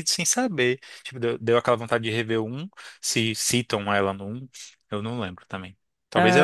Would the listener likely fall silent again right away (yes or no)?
yes